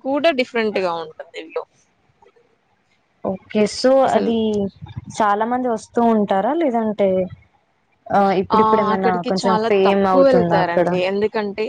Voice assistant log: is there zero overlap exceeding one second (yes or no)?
no